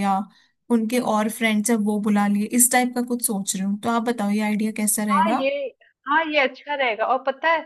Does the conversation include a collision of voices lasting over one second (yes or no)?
no